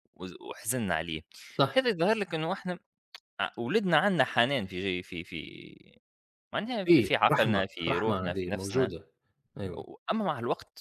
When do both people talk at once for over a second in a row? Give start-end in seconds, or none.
6.8-8.9